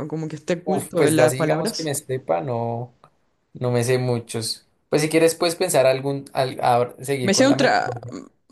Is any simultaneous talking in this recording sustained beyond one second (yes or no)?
yes